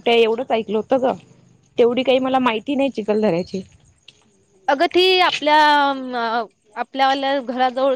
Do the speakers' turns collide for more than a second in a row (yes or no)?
no